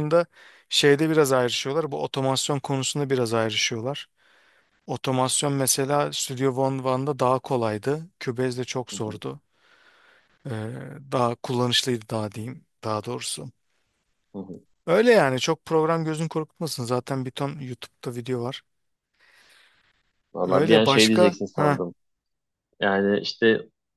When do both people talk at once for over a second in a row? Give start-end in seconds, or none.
20.4-21.8